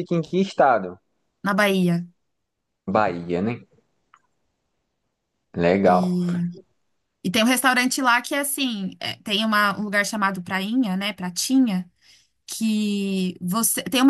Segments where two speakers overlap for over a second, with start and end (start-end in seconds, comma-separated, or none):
none